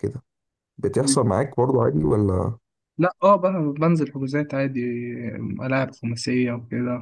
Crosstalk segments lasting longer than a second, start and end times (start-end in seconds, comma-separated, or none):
none